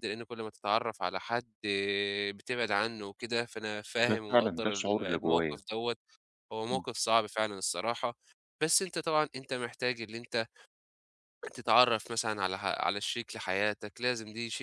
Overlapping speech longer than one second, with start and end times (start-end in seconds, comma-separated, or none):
4.1-5.6